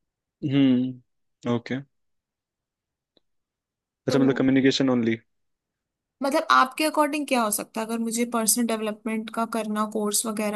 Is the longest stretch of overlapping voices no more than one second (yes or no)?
yes